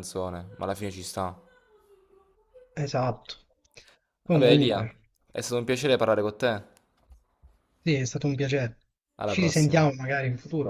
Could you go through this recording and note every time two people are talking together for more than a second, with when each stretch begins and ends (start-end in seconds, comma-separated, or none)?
none